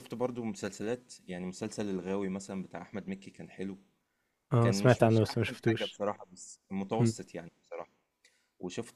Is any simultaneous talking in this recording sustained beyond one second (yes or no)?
yes